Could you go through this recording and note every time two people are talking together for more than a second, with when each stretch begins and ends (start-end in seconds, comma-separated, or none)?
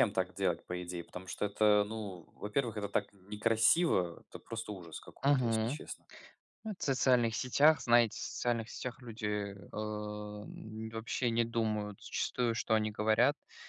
none